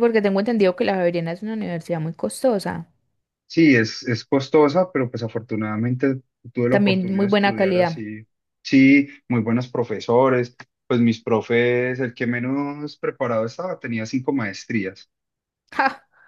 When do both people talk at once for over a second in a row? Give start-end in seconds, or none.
6.7-8.0